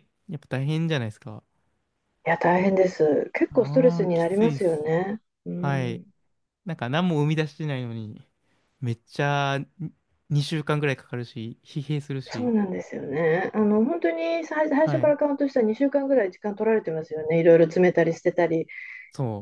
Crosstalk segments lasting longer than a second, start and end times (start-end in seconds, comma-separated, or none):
3.5-4.8